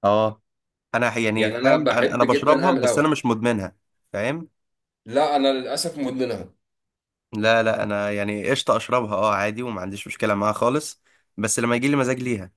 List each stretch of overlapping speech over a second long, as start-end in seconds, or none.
1.4-3.1